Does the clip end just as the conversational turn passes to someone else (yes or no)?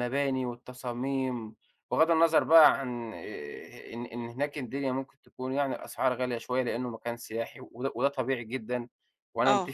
no